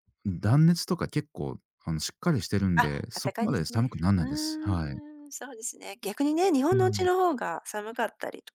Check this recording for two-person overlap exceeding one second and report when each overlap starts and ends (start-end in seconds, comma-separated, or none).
2.8-5.0